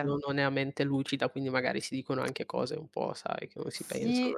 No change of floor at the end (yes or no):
no